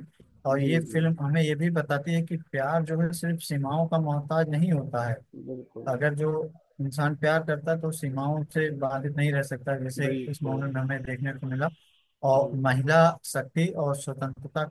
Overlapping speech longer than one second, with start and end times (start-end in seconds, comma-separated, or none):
none